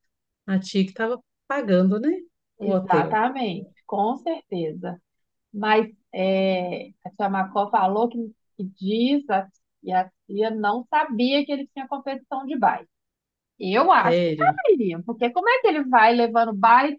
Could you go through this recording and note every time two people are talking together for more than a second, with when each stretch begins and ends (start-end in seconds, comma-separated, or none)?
none